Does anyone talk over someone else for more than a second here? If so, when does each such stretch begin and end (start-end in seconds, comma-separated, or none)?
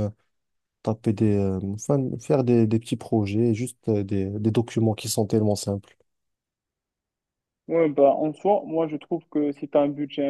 none